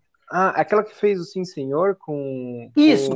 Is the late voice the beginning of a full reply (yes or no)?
yes